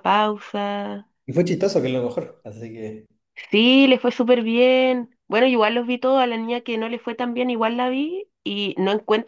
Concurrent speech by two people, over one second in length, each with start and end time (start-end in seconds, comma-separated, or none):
none